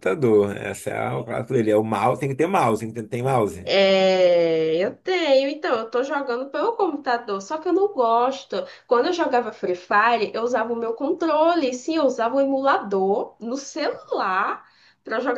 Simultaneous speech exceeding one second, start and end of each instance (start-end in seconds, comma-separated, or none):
none